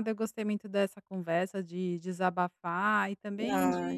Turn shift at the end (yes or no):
no